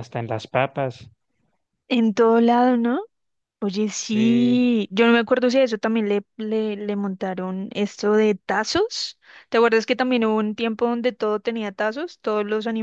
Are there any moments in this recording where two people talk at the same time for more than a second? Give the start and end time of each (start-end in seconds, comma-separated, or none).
none